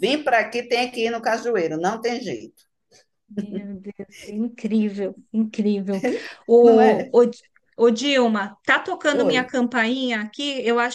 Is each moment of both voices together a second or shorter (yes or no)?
yes